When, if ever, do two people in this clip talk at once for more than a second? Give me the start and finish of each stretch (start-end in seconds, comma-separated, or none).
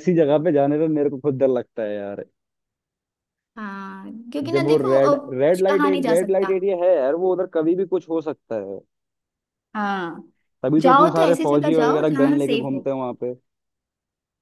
4.5-6.5, 10.8-12.9